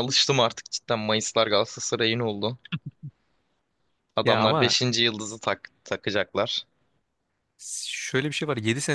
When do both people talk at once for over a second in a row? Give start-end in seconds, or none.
none